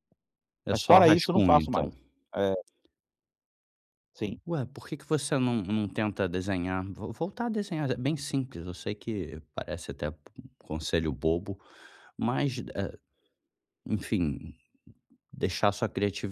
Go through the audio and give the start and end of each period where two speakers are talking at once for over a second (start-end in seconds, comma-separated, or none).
0.7-1.9